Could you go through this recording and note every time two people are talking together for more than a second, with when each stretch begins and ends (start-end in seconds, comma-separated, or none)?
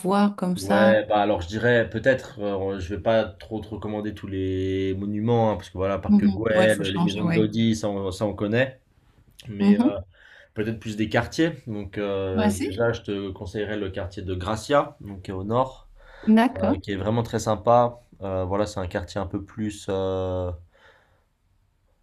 6.1-7.5